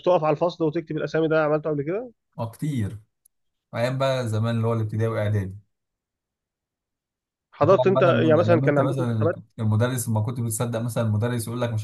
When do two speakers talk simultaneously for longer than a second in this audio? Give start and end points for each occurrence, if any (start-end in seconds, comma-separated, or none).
7.6-9.4